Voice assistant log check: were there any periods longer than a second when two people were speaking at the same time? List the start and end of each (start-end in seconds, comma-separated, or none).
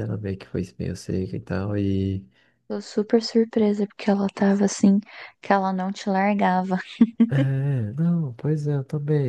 none